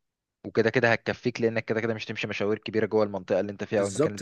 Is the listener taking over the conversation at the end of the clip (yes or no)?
yes